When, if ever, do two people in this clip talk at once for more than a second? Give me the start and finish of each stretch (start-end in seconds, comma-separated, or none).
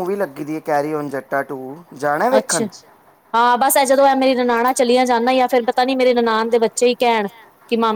none